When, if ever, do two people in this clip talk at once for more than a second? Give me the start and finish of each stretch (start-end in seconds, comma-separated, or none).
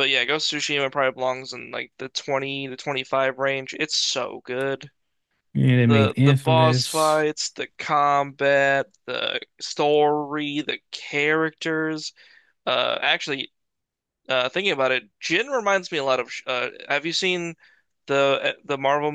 5.9-7.2